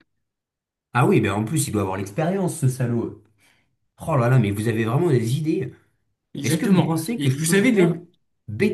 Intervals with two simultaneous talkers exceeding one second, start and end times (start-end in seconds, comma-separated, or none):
6.4-8.0